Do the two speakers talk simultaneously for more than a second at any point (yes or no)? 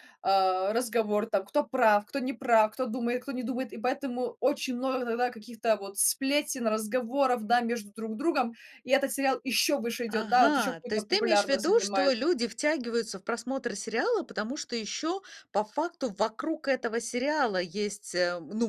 yes